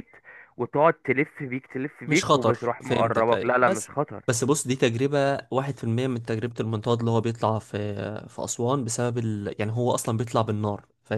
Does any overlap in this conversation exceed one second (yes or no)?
yes